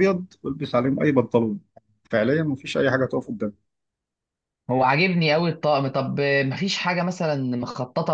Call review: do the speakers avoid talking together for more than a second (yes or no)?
yes